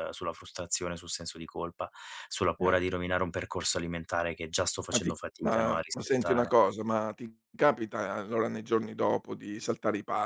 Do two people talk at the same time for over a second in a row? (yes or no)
yes